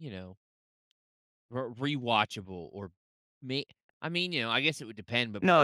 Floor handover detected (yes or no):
yes